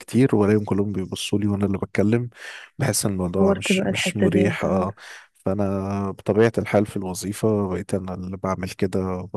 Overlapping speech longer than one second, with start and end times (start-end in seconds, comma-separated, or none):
3.4-4.9